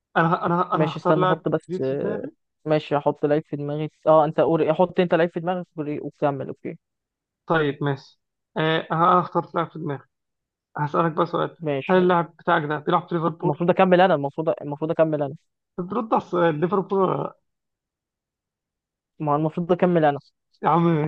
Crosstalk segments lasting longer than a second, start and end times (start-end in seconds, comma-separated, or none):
0.7-2.2